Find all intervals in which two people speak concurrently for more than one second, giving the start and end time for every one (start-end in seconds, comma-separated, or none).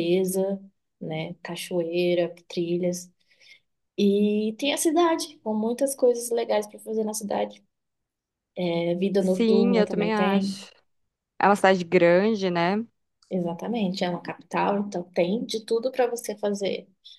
9.2-10.7